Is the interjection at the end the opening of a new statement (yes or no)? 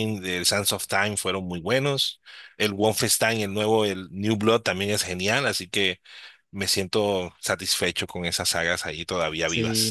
yes